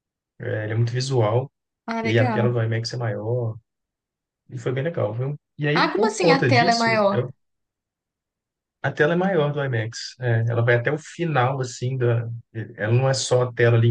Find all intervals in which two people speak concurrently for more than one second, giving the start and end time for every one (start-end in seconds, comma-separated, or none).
5.7-7.2